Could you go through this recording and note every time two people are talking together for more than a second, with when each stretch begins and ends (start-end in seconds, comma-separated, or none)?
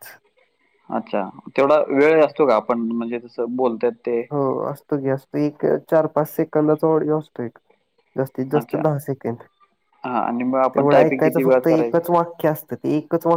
10.8-12.0